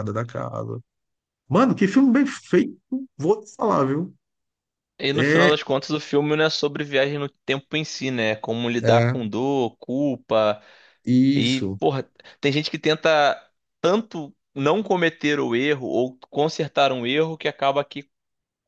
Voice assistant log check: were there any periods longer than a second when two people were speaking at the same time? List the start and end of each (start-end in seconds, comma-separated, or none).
none